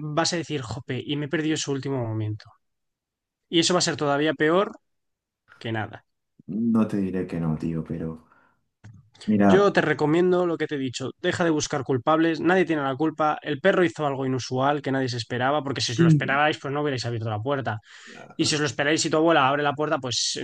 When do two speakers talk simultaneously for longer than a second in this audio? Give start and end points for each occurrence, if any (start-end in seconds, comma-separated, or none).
none